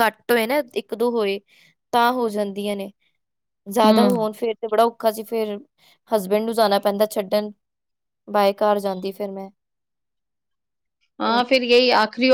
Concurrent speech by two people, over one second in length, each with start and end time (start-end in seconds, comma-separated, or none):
none